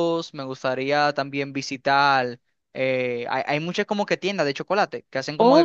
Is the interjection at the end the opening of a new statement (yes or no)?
no